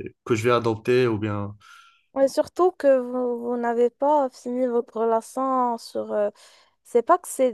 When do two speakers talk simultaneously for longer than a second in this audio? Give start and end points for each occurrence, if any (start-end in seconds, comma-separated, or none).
none